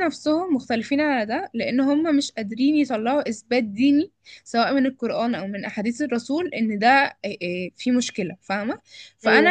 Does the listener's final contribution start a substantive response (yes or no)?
no